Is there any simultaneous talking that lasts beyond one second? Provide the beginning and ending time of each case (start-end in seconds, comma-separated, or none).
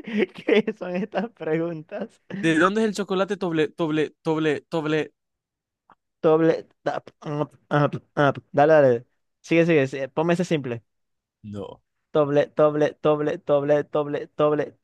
none